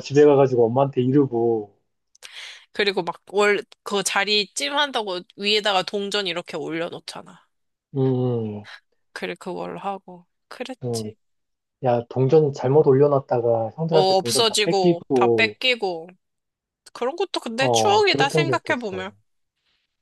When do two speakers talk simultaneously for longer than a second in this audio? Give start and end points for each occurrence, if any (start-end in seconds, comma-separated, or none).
13.9-15.6, 17.6-19.1